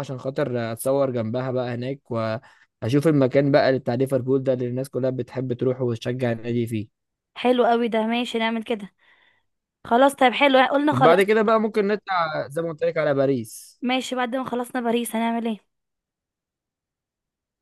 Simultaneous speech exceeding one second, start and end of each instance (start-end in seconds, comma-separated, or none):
none